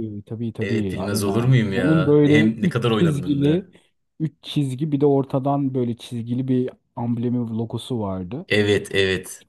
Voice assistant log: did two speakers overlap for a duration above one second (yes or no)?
yes